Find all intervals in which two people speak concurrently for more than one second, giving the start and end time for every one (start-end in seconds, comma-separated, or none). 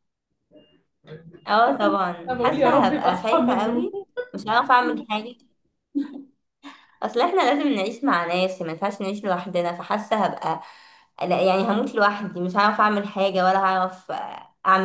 1.7-3.9